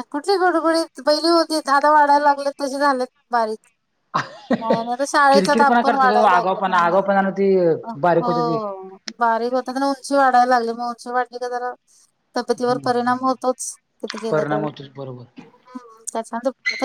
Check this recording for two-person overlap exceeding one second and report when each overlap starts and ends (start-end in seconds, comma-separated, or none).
5.3-7.0